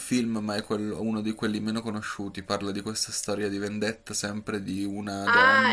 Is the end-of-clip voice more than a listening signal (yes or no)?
yes